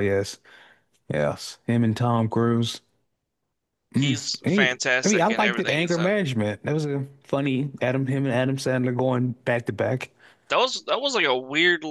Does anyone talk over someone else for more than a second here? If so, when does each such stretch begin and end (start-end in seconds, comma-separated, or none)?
3.9-6.2